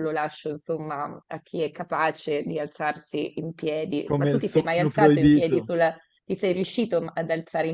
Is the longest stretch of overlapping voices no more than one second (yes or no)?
no